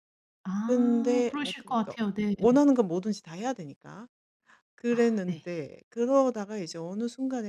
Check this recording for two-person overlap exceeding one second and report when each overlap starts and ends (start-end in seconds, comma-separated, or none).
0.6-1.9